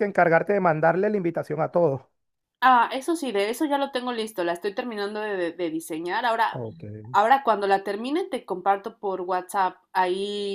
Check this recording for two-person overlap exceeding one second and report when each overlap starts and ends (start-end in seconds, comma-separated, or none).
none